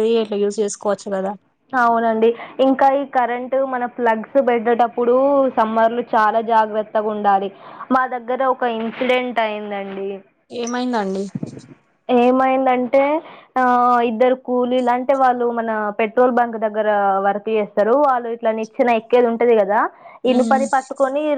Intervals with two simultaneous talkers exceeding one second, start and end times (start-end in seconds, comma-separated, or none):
none